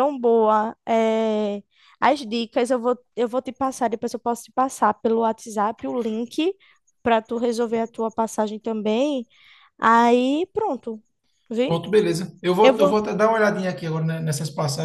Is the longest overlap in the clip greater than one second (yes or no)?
no